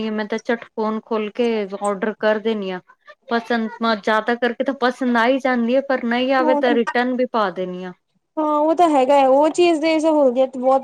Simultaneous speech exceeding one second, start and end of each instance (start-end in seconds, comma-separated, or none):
none